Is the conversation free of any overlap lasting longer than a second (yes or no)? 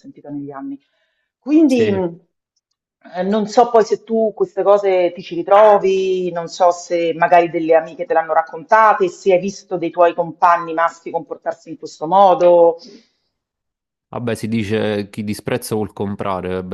yes